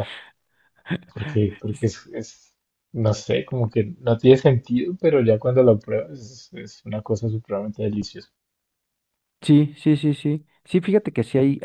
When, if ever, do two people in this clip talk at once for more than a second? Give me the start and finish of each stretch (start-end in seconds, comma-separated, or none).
none